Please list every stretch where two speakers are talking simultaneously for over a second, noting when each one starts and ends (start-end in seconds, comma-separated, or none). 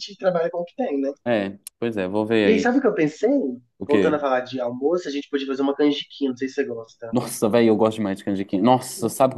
none